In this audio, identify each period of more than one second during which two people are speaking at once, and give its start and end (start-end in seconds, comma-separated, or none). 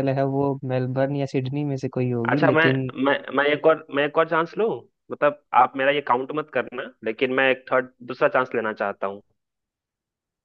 none